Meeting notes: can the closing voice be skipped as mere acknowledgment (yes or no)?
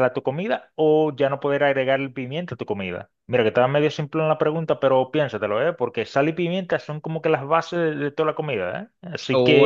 no